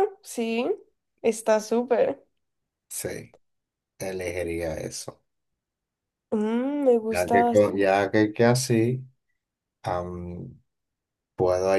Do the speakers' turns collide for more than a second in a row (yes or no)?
no